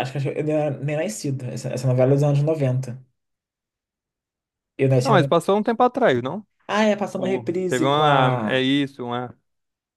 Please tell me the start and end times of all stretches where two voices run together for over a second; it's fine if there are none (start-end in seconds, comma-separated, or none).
7.2-8.6